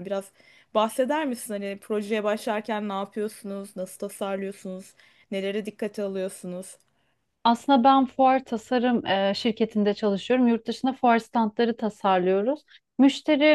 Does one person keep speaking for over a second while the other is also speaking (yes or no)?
no